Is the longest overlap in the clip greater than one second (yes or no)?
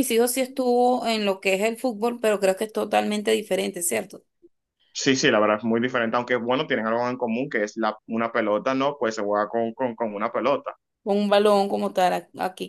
no